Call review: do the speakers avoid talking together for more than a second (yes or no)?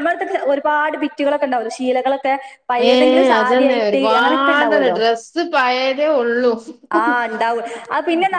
no